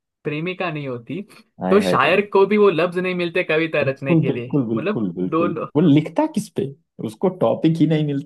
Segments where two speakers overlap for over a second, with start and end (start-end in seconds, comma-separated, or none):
3.9-5.7